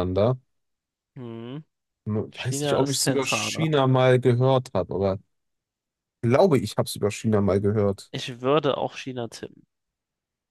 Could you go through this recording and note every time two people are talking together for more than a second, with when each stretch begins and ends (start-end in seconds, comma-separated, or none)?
2.3-3.7